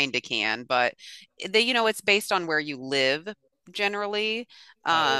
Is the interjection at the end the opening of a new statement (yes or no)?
yes